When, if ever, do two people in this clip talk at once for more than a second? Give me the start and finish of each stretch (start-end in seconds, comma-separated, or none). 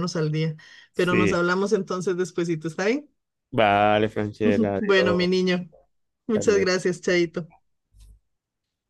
none